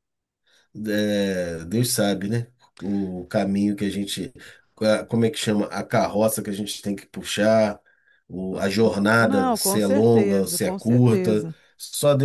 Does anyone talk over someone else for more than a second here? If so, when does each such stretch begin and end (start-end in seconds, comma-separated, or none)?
9.2-11.5